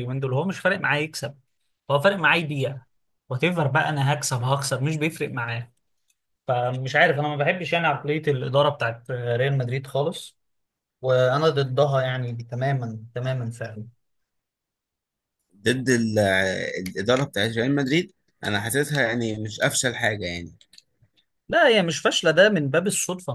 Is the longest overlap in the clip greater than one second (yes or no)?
no